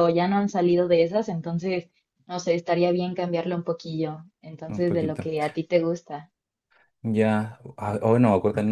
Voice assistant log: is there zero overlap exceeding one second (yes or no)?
yes